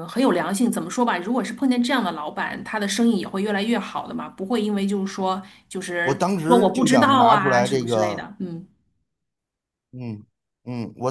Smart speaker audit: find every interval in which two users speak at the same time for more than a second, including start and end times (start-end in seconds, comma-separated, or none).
6.0-8.2